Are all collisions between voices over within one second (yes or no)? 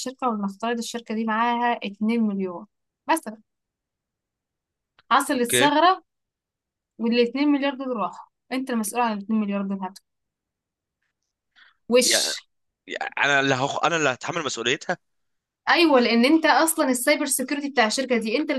yes